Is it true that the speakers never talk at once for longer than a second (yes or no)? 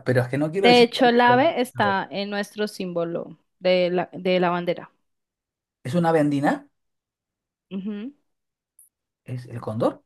no